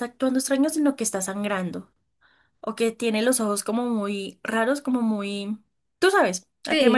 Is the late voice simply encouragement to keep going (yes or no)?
no